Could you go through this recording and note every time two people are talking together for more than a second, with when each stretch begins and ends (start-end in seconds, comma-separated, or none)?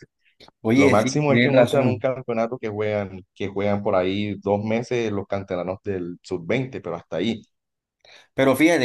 0.7-2.1